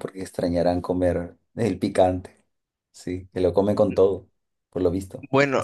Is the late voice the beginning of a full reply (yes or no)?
yes